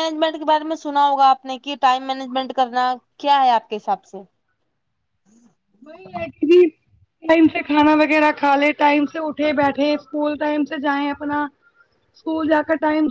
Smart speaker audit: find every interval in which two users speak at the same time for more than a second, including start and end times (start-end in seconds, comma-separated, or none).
none